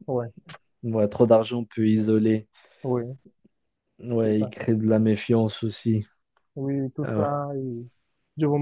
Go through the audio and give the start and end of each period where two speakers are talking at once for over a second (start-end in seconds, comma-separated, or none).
none